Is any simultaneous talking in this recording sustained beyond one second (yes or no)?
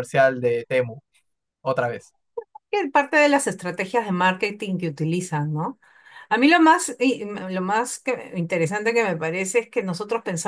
no